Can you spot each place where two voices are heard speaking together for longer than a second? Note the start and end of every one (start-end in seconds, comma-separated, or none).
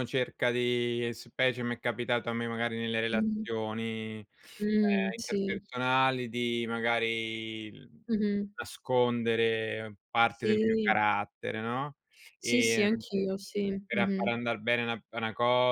none